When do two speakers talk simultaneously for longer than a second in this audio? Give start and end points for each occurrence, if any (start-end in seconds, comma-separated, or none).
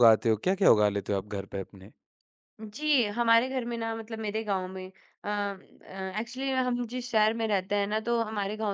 none